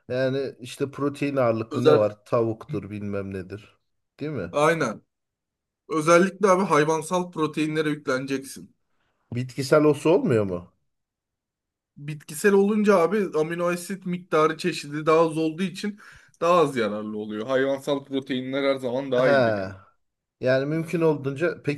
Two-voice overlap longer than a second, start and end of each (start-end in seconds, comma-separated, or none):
none